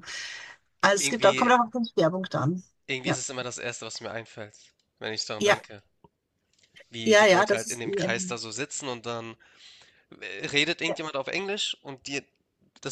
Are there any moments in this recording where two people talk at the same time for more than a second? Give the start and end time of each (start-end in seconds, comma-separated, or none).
7.0-8.4